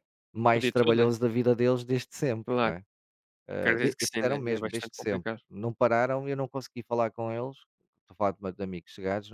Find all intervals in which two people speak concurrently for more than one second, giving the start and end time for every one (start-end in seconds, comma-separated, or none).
3.6-5.4